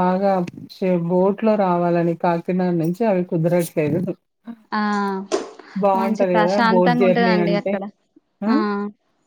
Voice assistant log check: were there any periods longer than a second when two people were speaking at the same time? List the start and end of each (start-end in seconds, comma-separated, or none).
6.0-7.7